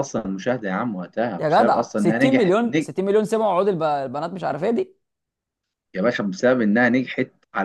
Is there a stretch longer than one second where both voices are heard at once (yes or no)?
yes